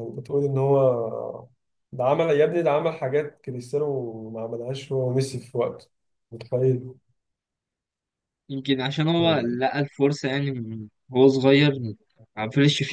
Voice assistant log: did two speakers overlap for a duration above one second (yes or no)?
no